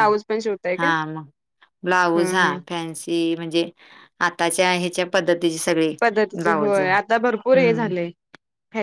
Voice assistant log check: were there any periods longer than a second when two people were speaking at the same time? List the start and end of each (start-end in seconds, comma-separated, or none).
6.4-7.9